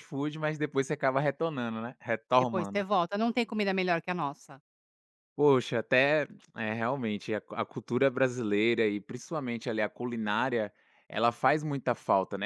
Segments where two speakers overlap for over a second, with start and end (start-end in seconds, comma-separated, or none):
none